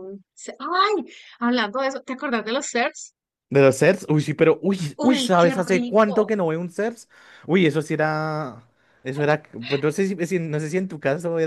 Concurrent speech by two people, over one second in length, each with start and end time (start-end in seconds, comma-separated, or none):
5.0-6.3